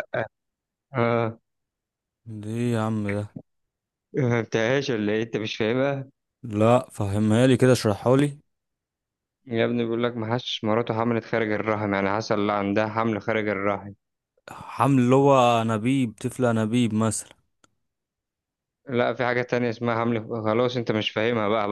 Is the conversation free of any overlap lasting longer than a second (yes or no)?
yes